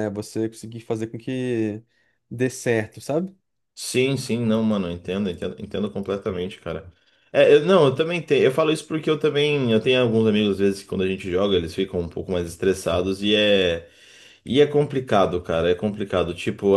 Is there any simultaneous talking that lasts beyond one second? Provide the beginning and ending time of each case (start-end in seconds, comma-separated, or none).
none